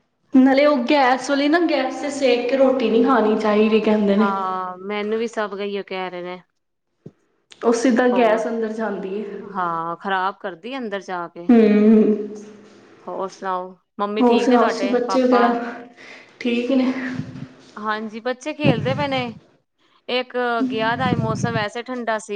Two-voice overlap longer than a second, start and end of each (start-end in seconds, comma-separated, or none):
14.2-15.4